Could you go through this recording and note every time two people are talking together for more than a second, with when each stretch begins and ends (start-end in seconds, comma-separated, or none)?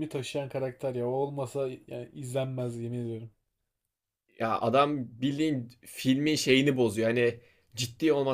none